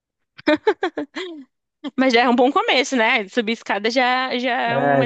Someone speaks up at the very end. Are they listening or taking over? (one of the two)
taking over